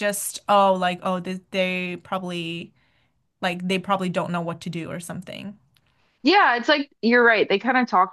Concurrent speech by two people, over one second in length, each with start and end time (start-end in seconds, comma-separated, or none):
none